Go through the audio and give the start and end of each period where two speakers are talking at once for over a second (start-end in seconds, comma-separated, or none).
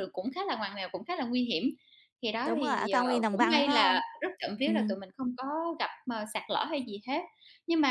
2.5-4.0